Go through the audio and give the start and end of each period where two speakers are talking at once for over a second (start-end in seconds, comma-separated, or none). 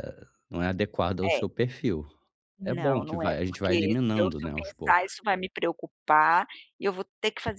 2.6-5.2